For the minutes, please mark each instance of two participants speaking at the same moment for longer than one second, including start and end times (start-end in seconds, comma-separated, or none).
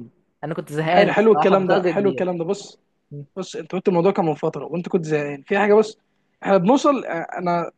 0.9-2.2